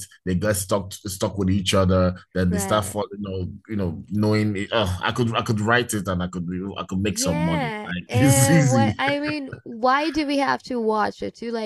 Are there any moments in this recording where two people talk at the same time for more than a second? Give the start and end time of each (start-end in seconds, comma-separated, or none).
7.0-9.0